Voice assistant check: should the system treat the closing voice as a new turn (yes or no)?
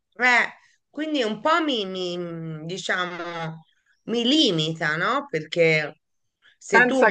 no